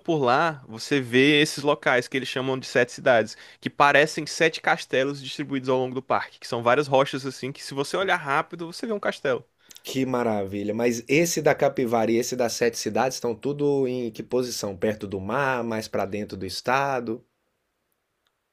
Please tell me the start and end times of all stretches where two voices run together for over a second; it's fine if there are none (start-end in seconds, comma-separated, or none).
none